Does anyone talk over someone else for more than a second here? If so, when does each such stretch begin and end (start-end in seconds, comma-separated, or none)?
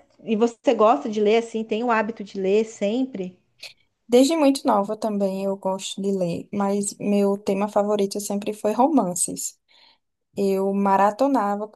none